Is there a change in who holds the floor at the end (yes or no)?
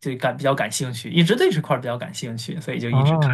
yes